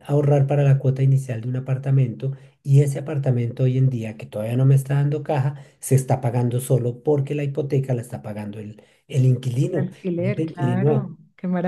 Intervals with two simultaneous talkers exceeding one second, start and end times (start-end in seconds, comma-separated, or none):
9.7-11.1